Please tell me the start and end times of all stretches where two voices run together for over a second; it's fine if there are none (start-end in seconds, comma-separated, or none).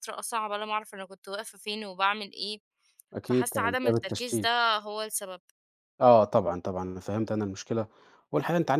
3.2-4.5